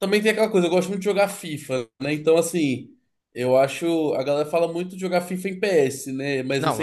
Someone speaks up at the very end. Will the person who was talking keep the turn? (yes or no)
no